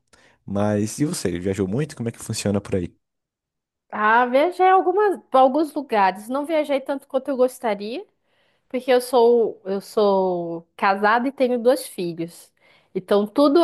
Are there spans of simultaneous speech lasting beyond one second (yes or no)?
no